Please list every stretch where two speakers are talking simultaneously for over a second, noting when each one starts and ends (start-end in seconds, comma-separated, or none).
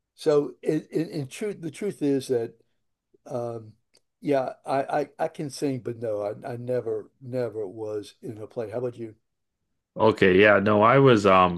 none